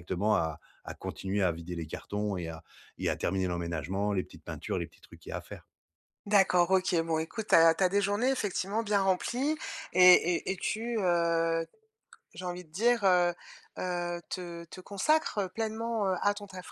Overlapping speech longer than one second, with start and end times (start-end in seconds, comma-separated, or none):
none